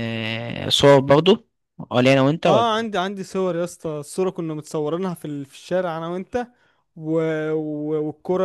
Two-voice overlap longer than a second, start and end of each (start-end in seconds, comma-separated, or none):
none